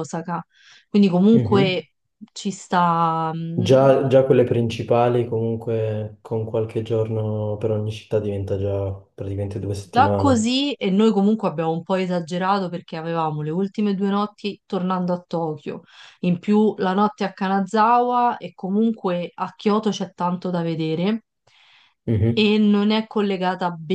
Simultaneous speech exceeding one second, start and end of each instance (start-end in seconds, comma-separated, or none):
none